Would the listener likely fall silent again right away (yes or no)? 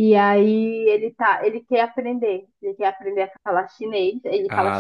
yes